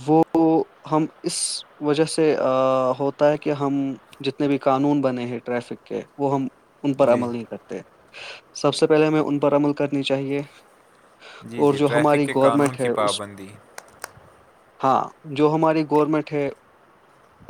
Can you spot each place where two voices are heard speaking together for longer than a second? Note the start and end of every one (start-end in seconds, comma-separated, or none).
11.6-13.2